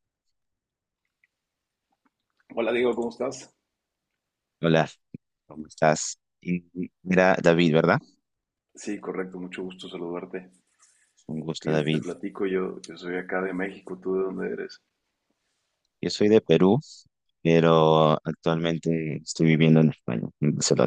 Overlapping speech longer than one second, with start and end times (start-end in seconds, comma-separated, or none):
none